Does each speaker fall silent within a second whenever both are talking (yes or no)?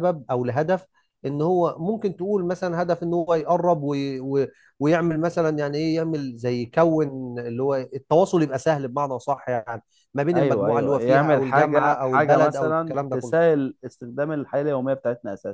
no